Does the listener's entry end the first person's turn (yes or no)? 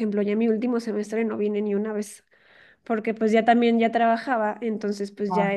no